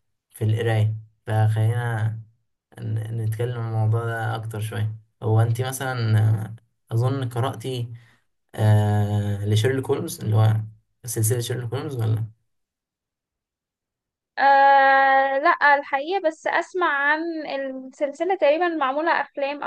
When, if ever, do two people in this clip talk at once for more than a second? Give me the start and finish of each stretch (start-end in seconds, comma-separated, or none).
none